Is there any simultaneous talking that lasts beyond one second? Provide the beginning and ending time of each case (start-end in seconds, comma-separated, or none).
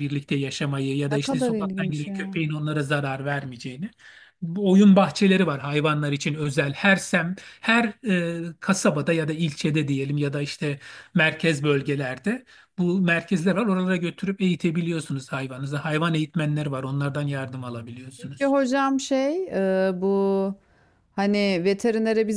1.1-2.4